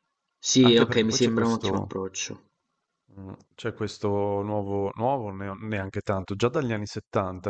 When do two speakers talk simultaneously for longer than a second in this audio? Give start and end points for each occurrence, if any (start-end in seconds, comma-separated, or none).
0.6-1.9